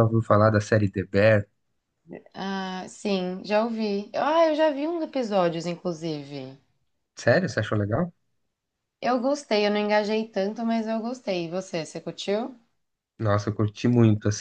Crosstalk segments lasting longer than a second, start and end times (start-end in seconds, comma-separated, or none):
none